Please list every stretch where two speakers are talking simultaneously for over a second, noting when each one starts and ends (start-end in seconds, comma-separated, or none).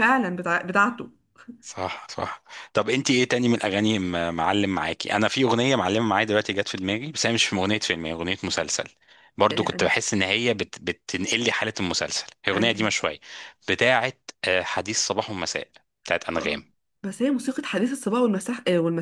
none